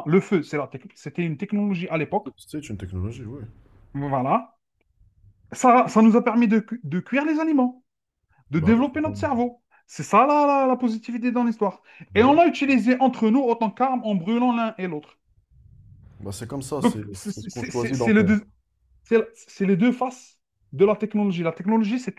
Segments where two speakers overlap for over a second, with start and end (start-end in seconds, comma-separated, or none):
16.8-18.3